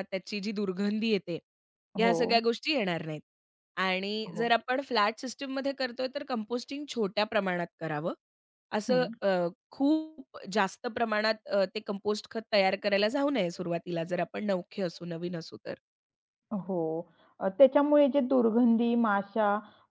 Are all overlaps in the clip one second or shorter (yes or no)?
yes